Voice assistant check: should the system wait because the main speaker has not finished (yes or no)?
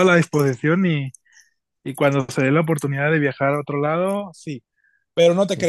yes